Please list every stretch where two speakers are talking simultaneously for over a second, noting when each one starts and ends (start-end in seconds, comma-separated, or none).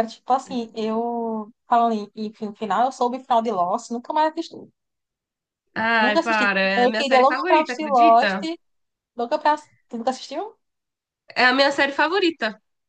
6.0-8.4